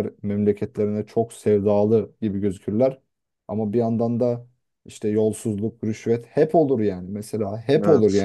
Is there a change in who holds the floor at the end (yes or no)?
no